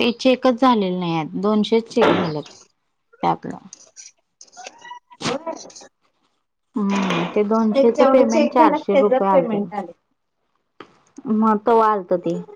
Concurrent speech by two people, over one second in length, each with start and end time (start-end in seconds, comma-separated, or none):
8.0-9.8